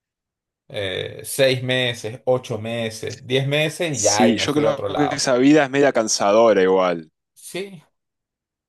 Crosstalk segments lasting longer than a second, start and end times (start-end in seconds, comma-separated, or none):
3.9-5.3